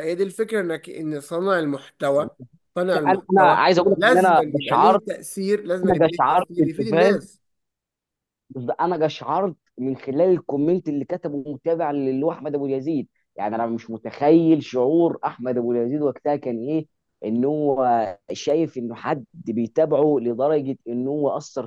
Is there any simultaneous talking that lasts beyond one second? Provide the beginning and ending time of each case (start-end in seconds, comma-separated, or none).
3.1-5.0, 5.8-7.2